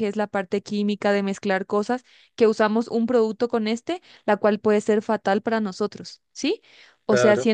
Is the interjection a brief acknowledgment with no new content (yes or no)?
yes